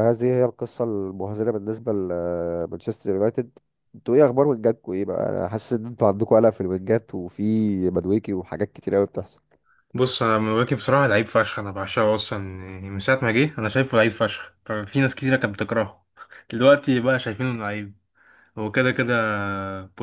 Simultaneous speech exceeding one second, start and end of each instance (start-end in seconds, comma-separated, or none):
none